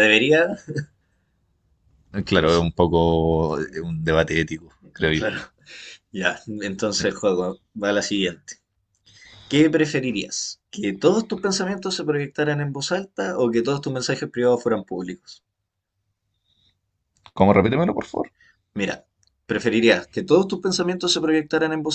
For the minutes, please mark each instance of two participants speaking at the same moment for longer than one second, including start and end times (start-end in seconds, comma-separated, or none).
none